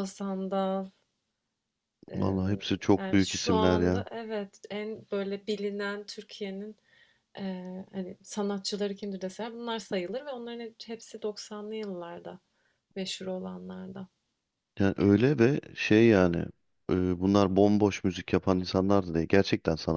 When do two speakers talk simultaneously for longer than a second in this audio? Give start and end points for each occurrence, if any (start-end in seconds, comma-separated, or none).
2.1-4.0